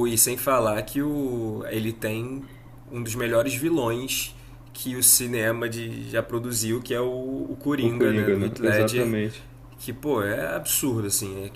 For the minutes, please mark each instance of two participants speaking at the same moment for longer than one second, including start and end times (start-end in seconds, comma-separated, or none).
7.8-9.2